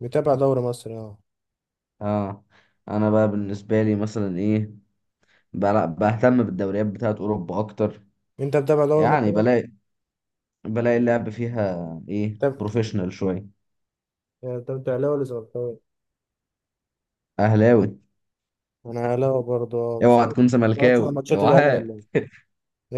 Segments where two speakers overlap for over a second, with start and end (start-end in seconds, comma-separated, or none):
20.0-21.9